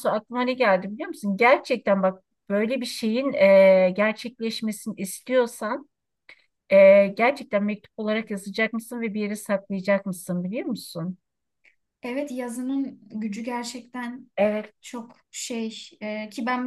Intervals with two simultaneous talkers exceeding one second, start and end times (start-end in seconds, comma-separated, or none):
none